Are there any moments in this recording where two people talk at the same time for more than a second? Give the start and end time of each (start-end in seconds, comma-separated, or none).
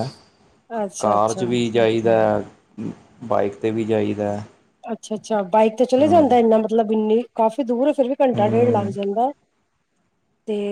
none